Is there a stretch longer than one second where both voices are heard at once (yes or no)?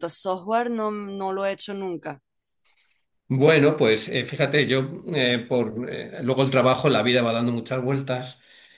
no